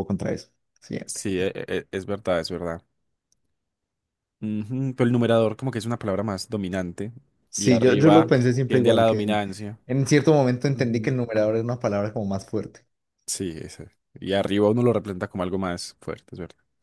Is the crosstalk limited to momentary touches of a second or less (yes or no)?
no